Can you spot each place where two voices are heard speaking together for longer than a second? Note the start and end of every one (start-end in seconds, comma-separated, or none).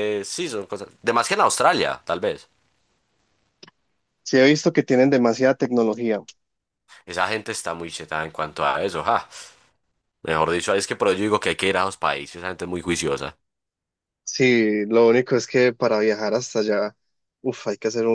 none